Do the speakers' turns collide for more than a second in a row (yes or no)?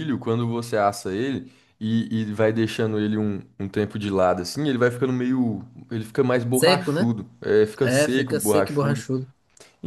yes